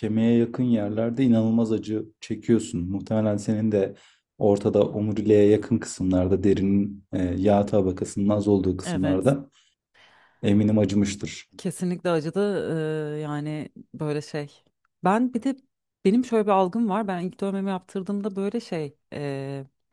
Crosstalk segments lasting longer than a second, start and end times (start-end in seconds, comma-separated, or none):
none